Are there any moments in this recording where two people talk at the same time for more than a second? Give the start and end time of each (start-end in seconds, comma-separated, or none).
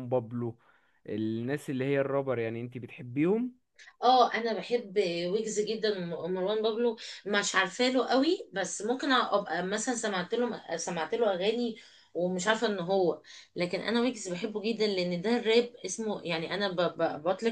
none